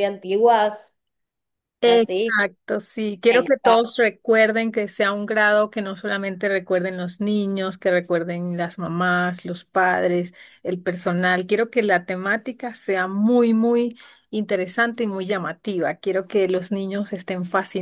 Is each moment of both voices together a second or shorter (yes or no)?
yes